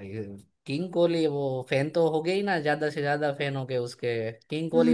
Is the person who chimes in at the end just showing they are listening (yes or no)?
no